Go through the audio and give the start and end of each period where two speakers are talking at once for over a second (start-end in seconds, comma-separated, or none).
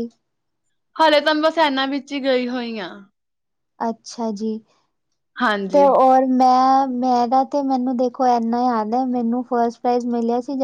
none